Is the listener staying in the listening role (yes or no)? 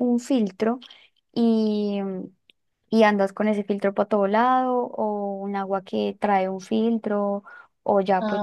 yes